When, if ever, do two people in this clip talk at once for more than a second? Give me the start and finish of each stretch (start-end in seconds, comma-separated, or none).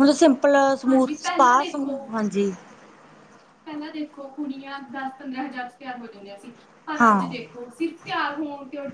none